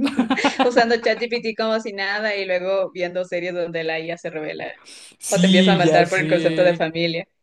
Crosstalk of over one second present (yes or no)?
yes